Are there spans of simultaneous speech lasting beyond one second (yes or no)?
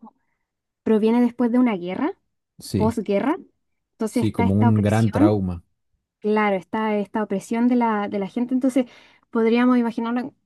yes